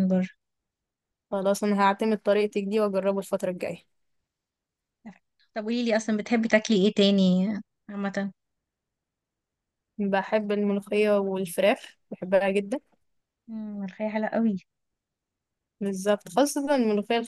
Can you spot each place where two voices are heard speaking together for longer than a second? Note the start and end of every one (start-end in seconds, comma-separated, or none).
none